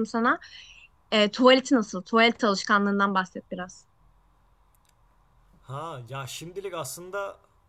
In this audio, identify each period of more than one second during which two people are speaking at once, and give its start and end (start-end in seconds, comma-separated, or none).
none